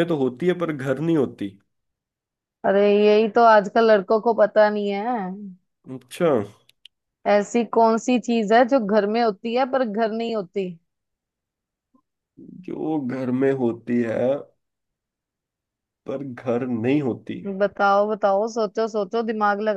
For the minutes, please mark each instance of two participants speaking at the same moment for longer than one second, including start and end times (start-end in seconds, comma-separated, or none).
none